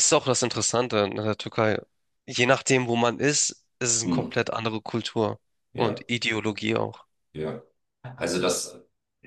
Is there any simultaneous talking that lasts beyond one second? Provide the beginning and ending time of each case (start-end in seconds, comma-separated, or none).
none